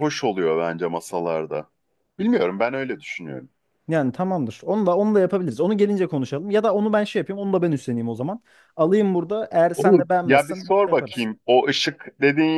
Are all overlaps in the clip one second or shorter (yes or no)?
no